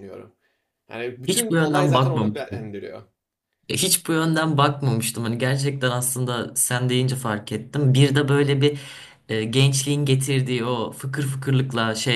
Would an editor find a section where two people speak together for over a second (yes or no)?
yes